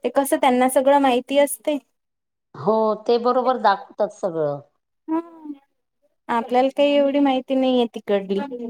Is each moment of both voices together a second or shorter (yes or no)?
yes